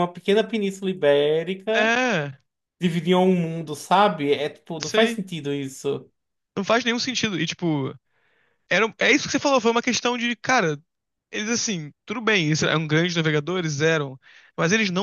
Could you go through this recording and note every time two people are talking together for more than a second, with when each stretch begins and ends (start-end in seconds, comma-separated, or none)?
none